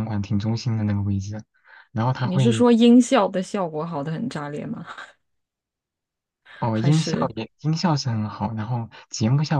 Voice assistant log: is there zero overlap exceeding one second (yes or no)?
yes